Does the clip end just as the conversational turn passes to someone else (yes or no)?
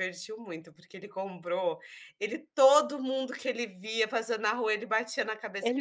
no